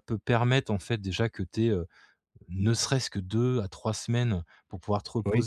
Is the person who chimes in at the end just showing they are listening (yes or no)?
yes